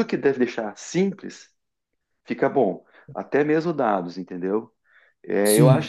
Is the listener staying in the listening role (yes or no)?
yes